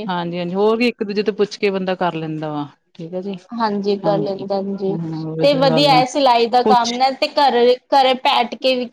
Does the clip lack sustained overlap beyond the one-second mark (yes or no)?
yes